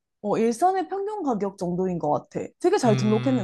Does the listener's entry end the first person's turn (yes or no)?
yes